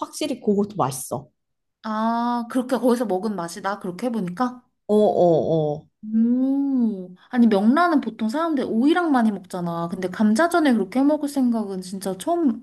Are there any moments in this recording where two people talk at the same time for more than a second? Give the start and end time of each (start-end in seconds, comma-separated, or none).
none